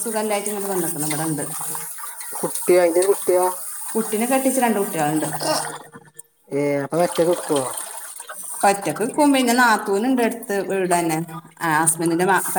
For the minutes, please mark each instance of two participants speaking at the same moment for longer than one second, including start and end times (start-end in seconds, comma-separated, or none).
none